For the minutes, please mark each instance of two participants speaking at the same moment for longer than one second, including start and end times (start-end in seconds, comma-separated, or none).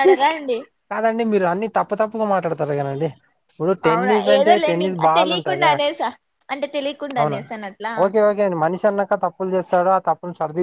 3.9-5.6